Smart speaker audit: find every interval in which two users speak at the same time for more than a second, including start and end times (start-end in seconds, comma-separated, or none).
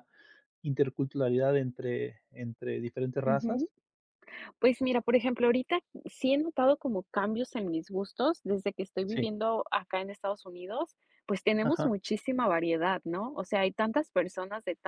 none